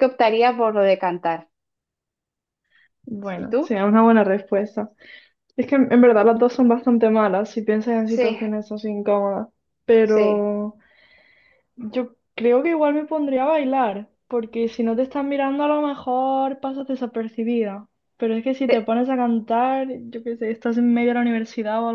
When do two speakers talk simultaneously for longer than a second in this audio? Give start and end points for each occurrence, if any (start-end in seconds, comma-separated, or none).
none